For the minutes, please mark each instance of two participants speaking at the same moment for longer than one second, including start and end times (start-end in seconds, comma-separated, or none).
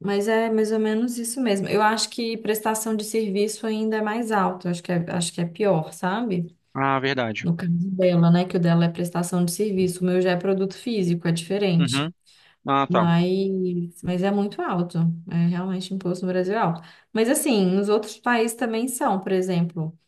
none